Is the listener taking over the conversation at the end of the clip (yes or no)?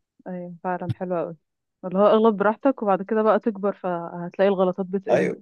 yes